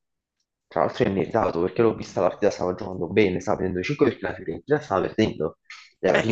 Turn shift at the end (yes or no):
no